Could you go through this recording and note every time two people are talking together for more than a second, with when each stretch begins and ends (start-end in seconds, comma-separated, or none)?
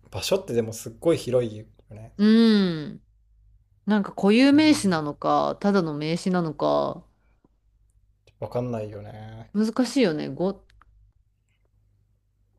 none